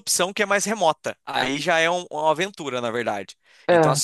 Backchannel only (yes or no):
yes